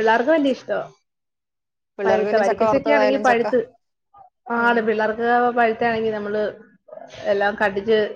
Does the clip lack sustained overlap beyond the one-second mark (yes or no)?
no